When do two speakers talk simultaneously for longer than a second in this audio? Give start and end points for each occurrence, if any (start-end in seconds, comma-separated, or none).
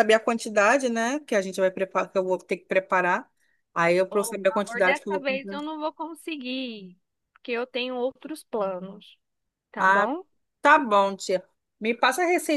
4.1-5.6